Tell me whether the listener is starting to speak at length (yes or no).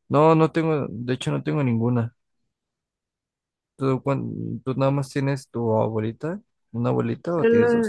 yes